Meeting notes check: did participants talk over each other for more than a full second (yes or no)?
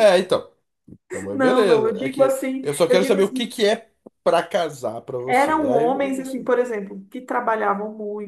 yes